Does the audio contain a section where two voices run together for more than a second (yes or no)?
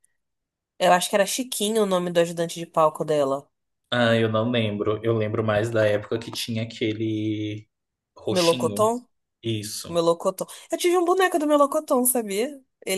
no